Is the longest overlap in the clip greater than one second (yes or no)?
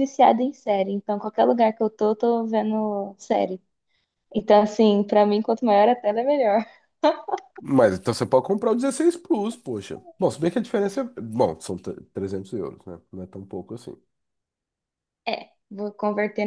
no